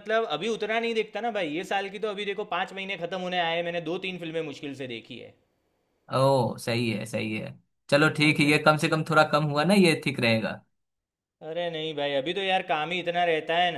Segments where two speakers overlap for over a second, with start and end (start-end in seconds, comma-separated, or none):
none